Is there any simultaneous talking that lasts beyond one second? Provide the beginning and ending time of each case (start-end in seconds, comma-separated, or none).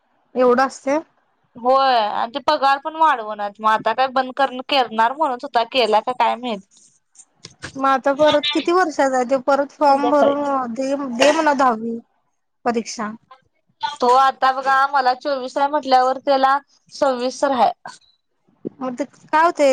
none